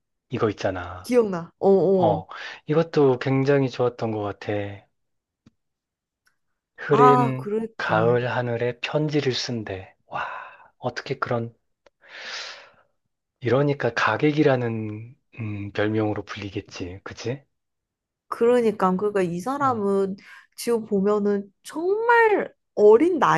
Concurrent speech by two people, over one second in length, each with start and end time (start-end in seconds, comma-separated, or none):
6.9-8.2